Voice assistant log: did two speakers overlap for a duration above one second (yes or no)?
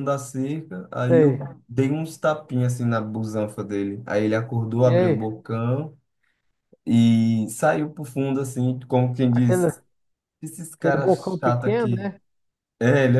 yes